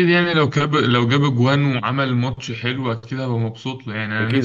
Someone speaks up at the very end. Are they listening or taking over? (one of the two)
taking over